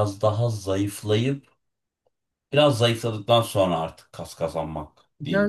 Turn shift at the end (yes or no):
yes